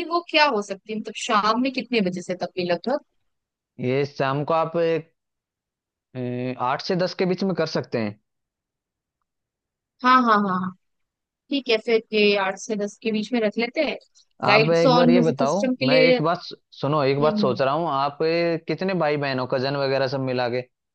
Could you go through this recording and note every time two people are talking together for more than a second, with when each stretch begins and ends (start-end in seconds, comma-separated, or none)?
14.5-16.2